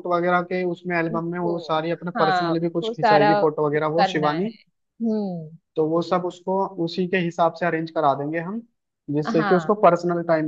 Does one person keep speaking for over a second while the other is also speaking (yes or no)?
yes